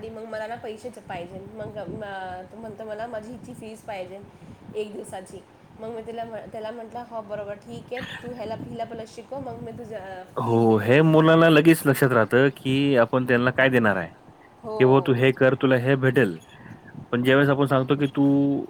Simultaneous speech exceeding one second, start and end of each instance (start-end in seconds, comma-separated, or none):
none